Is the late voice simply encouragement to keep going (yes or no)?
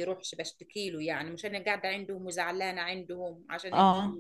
yes